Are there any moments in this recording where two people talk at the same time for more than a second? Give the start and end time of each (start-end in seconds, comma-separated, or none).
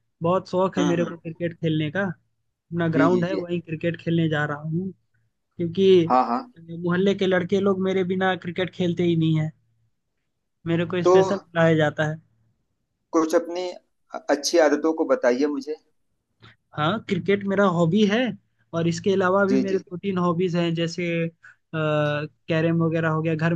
none